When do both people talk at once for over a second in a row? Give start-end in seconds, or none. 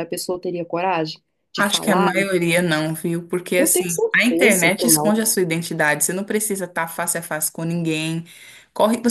3.6-5.2